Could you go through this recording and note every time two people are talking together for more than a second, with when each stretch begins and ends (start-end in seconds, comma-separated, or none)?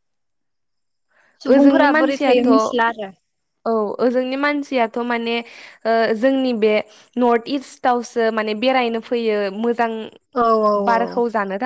1.5-3.1